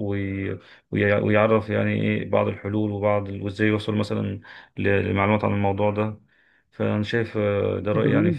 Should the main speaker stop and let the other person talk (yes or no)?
yes